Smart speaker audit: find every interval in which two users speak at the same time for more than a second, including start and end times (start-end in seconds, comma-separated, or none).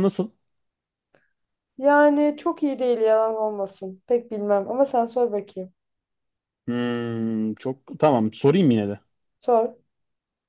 none